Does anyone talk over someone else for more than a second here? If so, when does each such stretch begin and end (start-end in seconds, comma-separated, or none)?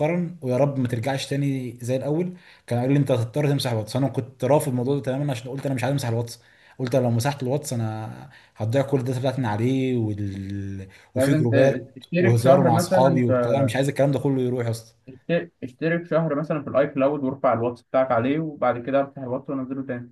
11.1-13.2